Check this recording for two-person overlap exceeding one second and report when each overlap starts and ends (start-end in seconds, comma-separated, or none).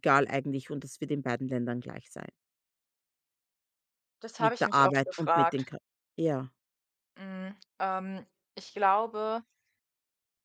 4.4-5.7